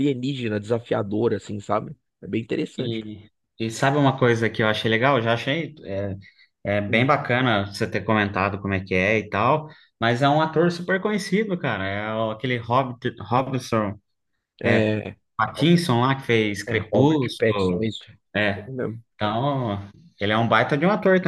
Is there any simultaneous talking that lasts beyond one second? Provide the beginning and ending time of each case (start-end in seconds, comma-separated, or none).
16.7-17.9